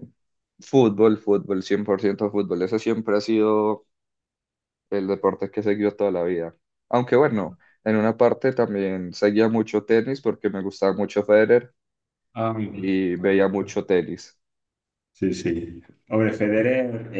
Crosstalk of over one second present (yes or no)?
no